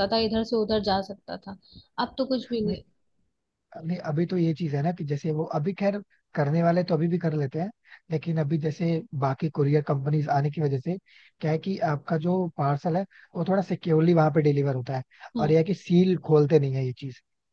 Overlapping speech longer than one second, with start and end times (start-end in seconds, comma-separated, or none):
none